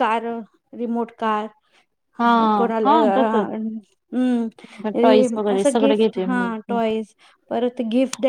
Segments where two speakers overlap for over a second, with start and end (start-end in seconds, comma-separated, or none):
5.0-6.5